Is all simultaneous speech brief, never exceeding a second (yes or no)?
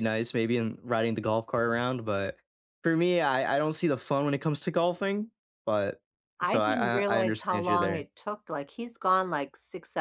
no